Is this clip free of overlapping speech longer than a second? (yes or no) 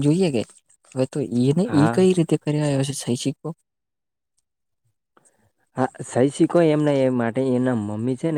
yes